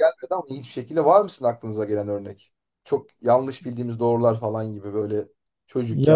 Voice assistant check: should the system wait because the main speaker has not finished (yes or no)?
no